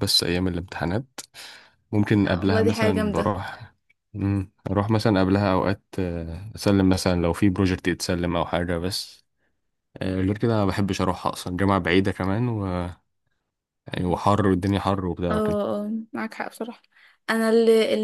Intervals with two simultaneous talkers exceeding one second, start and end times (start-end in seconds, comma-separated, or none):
2.1-3.4